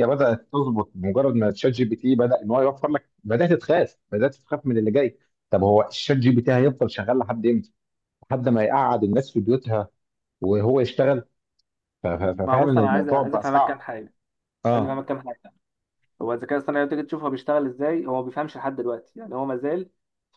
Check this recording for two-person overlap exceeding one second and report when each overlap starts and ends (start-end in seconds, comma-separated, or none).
12.4-13.9